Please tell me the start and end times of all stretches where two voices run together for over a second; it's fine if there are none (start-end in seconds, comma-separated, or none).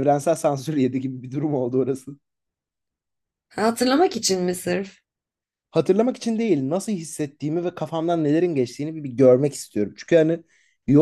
none